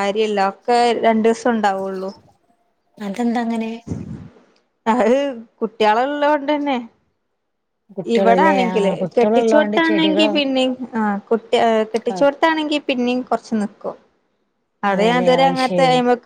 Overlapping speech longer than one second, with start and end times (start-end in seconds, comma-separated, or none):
8.2-10.3